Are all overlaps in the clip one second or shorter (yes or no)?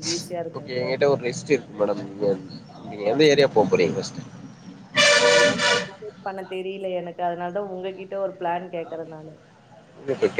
yes